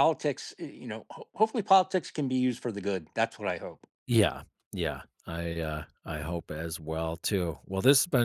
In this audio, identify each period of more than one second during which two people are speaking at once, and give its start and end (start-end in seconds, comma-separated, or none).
none